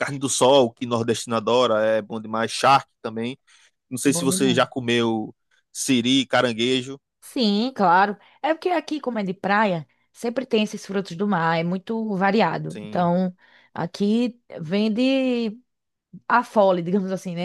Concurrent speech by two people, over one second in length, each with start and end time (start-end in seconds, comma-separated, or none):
none